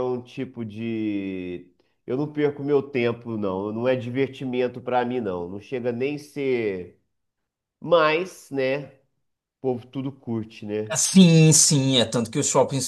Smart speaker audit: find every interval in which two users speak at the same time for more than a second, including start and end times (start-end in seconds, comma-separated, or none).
none